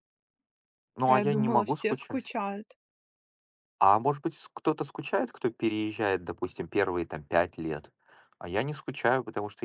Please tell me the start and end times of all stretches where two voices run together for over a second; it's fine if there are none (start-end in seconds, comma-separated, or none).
1.1-2.3